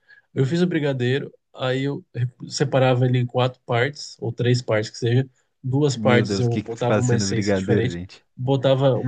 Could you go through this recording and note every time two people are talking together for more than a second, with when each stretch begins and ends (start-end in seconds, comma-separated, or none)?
5.9-8.0